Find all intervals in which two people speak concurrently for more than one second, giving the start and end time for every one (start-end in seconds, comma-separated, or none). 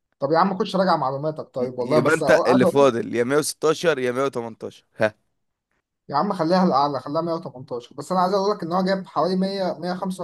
1.6-2.9